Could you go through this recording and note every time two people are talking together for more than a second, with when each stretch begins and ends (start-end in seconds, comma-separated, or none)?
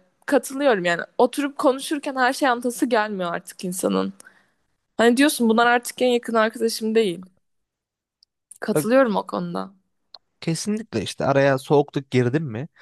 none